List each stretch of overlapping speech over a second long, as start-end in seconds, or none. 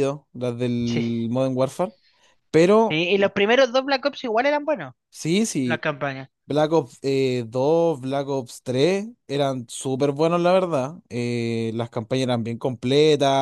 none